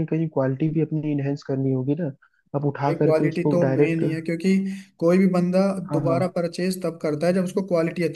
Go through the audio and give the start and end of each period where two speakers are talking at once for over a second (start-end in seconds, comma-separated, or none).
2.8-4.0